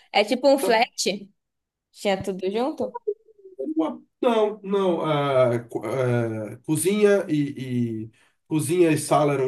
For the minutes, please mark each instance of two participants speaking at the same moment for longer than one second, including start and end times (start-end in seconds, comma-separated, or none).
none